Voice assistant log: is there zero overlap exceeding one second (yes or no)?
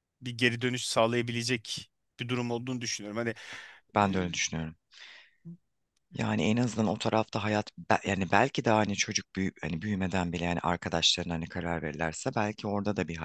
yes